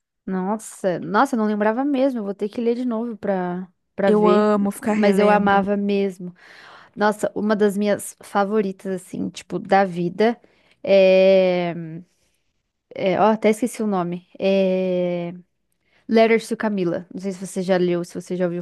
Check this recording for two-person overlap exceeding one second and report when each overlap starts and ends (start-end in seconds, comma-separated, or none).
4.0-5.6